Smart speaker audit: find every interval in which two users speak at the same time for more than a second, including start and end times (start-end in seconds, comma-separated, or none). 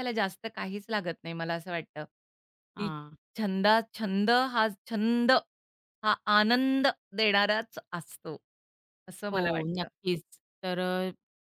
none